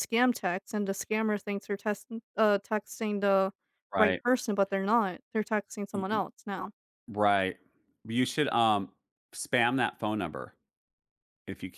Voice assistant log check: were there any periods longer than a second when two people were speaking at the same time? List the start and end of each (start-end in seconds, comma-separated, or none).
none